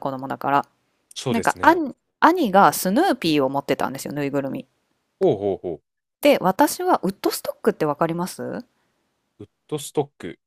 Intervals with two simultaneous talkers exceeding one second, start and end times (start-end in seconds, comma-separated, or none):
none